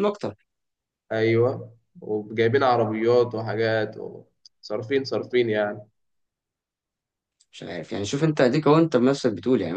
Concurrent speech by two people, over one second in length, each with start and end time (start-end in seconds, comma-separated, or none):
none